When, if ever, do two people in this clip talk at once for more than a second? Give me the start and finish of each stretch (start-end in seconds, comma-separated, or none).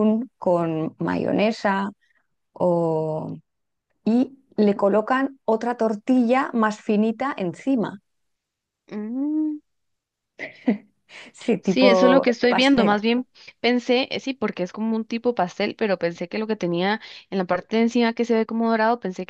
11.6-13.0